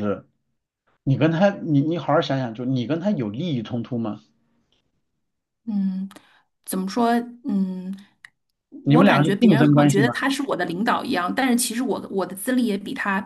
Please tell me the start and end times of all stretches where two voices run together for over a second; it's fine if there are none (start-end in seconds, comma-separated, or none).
8.8-10.1